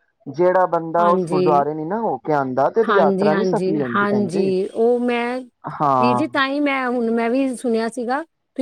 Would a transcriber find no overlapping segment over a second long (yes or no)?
no